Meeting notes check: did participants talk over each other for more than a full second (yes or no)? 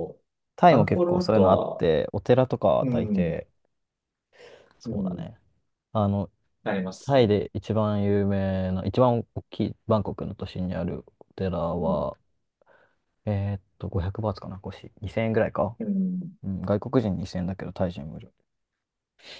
yes